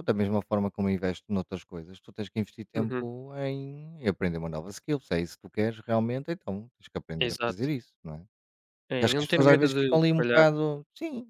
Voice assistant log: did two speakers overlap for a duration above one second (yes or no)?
yes